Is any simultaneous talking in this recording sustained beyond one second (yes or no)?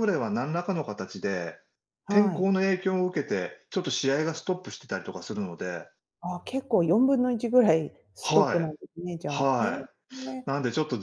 yes